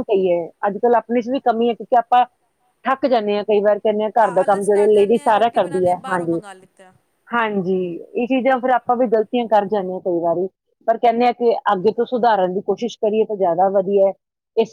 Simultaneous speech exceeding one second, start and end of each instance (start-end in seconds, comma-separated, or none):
4.2-6.4